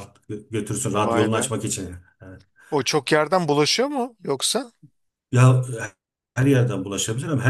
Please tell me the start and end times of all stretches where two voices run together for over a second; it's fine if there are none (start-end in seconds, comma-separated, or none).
none